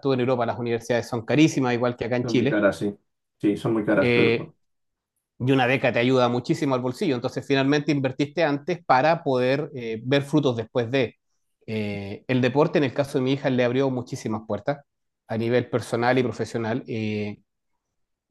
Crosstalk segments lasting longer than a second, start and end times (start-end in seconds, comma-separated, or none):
none